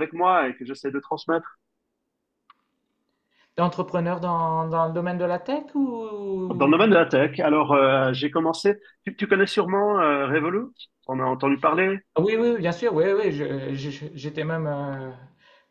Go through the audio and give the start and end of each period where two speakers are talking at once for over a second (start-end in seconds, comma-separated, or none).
none